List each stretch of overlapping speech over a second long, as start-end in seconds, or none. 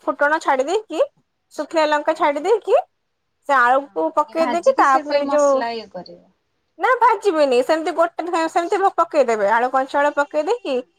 3.9-5.6